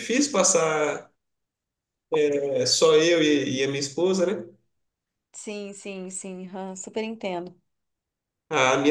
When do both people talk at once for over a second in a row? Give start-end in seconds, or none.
none